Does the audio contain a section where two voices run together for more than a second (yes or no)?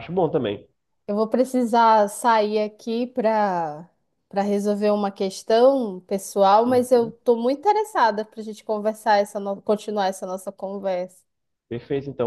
no